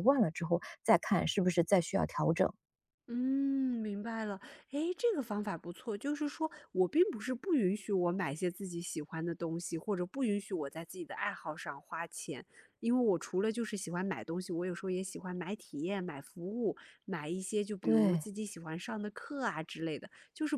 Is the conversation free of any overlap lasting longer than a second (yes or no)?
yes